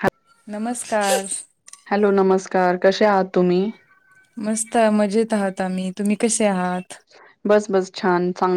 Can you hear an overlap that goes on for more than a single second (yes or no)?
no